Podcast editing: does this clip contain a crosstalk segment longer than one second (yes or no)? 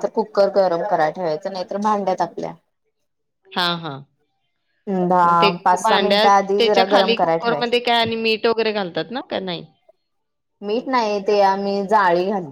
yes